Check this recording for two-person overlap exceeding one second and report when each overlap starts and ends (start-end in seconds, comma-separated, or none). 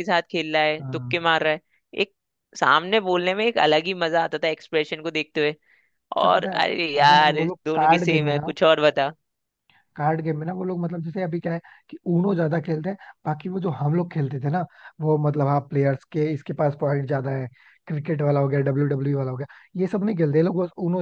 6.2-8.5